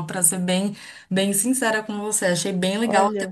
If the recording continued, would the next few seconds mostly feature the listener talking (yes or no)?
no